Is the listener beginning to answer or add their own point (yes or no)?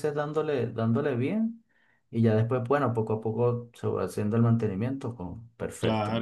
yes